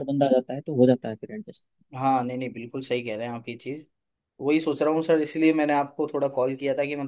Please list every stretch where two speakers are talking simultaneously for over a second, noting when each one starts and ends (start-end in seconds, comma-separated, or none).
none